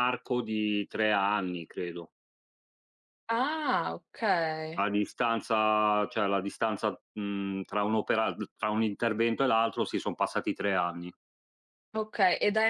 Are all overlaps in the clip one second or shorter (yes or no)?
yes